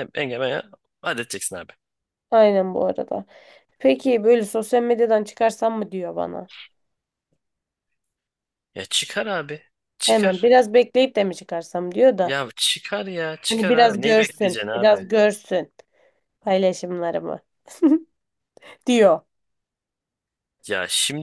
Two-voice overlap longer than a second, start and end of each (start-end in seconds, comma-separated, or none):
13.5-15.1